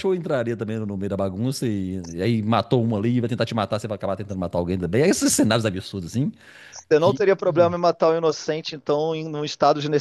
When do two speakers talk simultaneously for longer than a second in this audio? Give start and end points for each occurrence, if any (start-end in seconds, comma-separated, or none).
none